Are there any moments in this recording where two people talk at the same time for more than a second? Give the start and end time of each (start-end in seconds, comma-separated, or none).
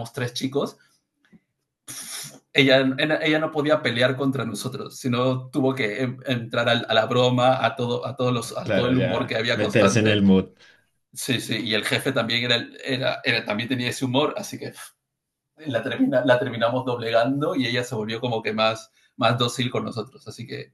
8.6-10.2